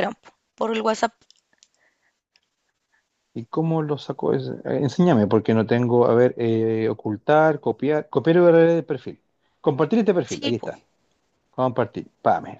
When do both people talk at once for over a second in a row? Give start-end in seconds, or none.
none